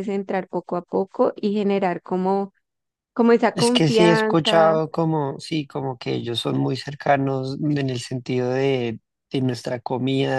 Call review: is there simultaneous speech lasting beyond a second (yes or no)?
yes